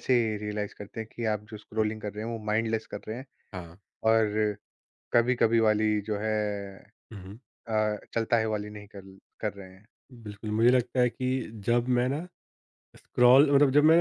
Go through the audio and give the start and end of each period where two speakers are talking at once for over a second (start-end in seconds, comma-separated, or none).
none